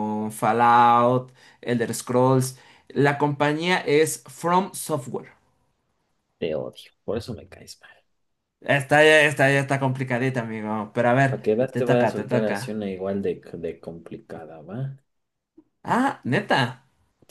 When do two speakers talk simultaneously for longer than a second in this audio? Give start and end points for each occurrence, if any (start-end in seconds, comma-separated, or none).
11.3-12.8